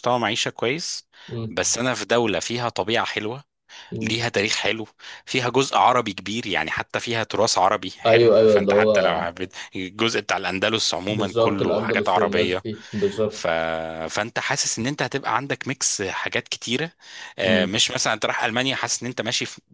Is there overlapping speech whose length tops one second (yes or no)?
yes